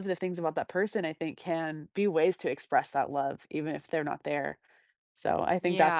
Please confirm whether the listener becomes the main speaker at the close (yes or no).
yes